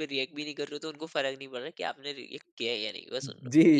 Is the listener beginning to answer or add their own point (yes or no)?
yes